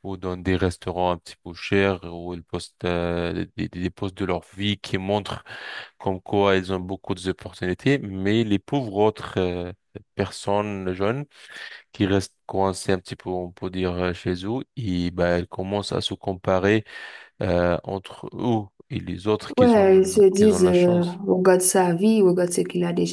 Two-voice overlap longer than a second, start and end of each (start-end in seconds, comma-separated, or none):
19.6-21.2